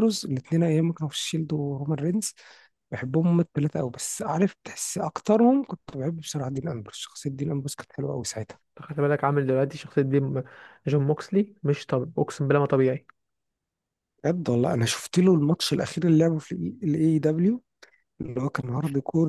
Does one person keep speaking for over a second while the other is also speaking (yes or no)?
no